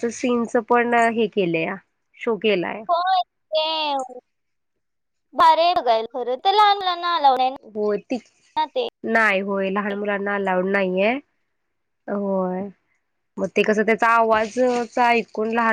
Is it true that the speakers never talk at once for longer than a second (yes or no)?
yes